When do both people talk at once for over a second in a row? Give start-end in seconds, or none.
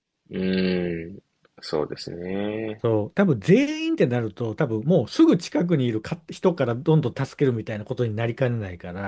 none